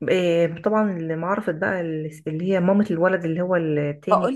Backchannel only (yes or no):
no